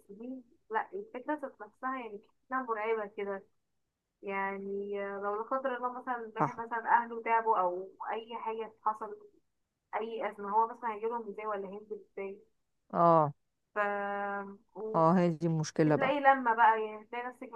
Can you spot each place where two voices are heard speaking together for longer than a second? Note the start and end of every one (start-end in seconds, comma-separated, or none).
none